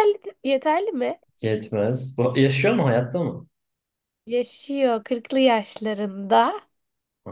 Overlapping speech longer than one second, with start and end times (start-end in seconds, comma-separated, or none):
none